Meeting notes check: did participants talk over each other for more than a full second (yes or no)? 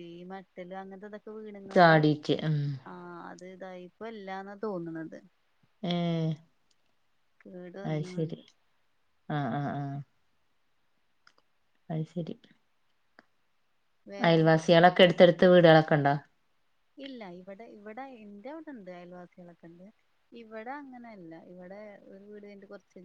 no